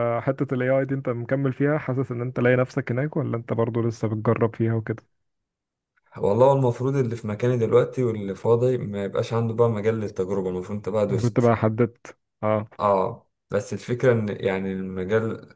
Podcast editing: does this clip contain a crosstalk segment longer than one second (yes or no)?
no